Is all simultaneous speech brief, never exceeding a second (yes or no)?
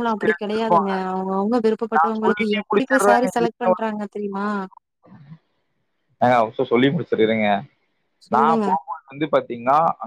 no